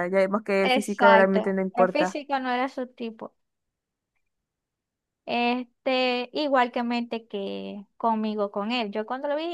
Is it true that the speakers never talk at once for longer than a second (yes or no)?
no